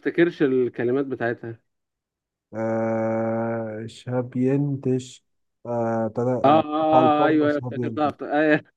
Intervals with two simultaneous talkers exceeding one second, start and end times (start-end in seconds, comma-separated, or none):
6.4-8.1